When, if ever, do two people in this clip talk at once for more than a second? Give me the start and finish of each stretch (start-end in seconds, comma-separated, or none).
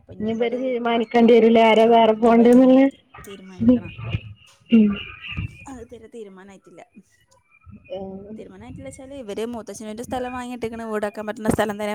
none